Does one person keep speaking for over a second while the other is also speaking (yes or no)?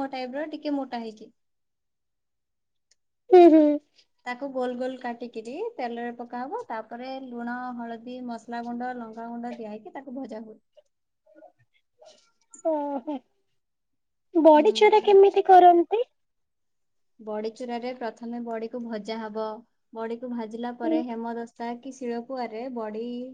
no